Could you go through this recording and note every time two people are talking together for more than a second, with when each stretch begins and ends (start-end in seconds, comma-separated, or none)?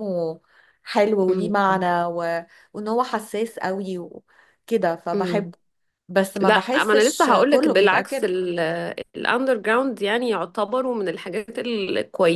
6.4-8.3